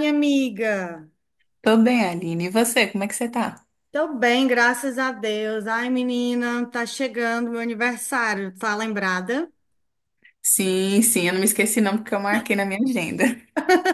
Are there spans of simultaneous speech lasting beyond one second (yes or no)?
no